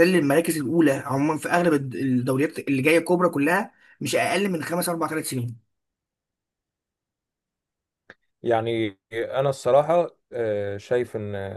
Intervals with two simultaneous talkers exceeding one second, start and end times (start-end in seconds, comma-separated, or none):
none